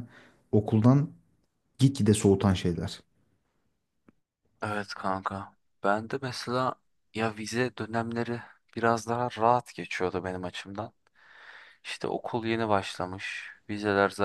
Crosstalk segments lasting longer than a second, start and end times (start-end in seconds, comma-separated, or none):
none